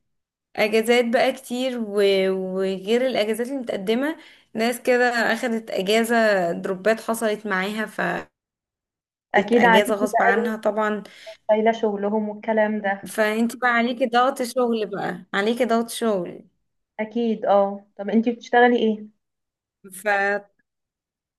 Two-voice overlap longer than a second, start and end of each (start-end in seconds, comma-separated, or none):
9.4-10.6